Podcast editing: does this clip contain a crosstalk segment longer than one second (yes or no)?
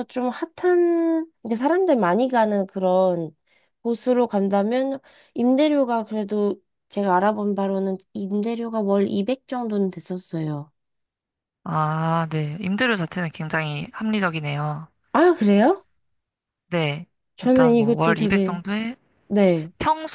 yes